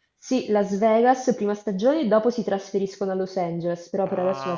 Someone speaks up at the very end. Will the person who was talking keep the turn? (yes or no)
no